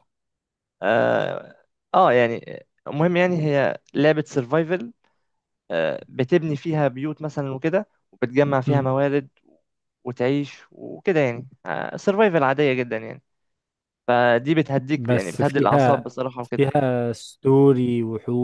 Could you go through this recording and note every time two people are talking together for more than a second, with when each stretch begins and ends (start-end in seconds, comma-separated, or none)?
14.9-16.7